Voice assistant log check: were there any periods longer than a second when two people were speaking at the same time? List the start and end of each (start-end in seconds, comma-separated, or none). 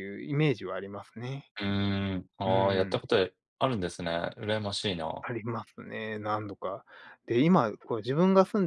none